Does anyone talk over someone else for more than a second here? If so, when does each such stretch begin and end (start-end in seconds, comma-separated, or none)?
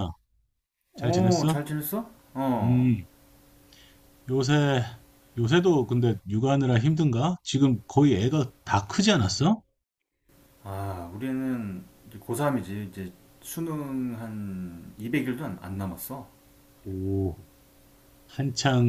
none